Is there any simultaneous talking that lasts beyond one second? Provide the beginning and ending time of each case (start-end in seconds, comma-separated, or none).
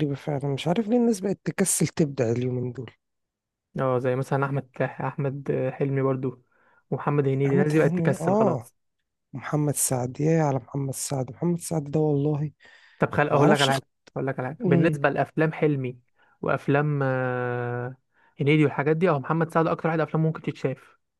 7.5-8.7